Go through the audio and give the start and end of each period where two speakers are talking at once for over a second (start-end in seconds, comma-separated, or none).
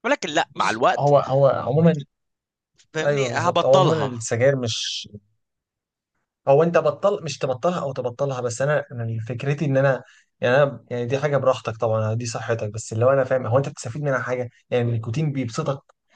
3.0-4.2